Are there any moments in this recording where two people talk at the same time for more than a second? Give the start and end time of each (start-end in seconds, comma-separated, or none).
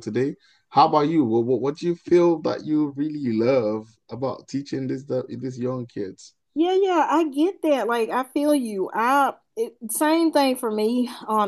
none